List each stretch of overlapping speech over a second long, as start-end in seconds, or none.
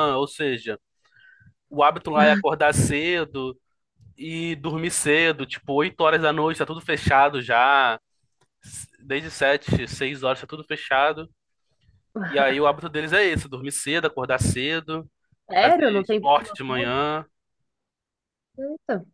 15.6-16.9